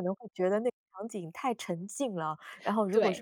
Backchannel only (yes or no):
yes